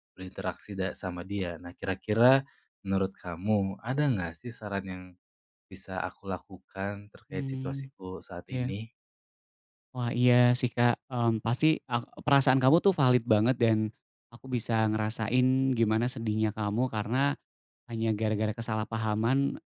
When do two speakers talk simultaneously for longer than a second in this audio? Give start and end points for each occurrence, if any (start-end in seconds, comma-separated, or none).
none